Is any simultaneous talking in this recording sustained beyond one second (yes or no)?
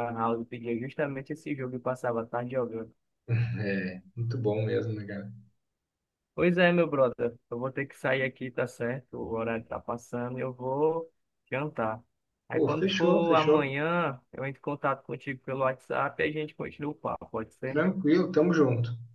yes